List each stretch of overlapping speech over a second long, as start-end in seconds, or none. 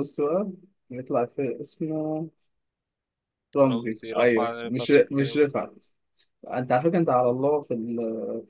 3.7-5.3